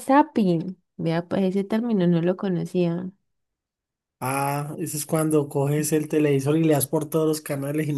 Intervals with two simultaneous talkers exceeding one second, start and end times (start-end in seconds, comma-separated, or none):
none